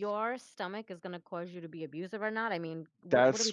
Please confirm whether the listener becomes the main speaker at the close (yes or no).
yes